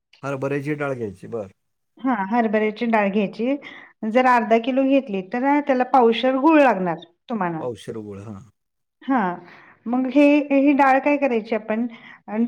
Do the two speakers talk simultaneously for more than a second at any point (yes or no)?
no